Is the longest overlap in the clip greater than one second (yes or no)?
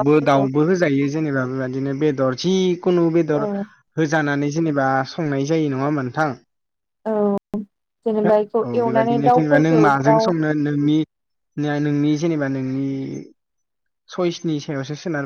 yes